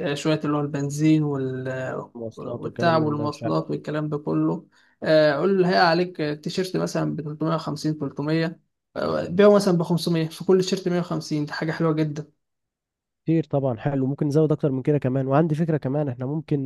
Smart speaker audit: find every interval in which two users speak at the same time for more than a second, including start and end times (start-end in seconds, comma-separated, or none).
2.1-3.5